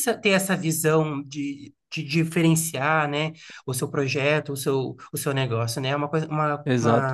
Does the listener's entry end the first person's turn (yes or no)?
yes